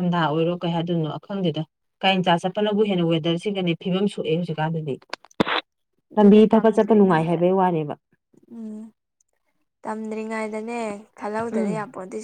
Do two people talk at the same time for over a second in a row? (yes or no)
yes